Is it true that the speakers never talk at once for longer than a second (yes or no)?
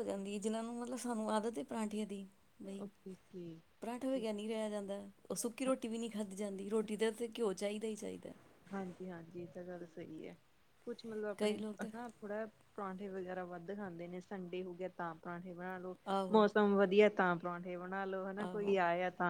yes